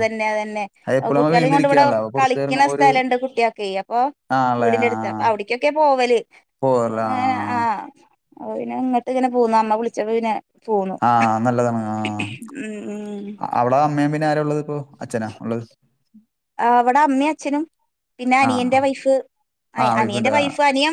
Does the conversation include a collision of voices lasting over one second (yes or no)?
yes